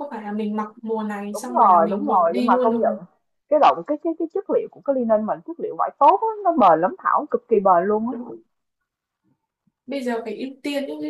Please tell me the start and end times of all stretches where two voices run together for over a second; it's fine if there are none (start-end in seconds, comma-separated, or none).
1.3-2.9